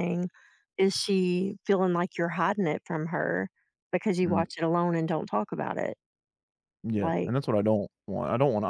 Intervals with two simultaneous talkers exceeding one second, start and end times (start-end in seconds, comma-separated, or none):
none